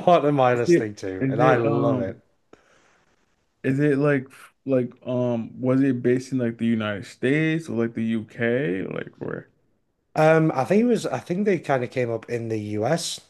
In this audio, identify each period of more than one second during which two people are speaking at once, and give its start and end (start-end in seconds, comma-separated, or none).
0.5-2.2